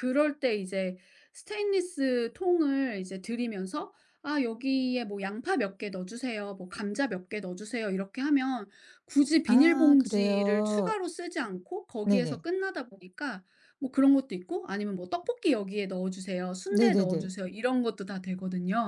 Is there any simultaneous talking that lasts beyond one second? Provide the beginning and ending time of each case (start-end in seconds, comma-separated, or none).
9.4-11.0